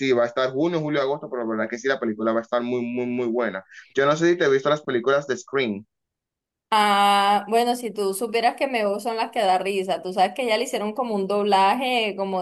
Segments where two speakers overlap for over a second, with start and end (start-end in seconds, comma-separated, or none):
none